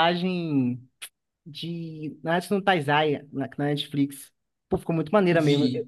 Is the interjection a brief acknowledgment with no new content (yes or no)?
yes